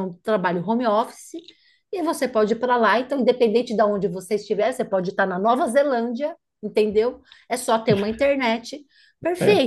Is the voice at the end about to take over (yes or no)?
no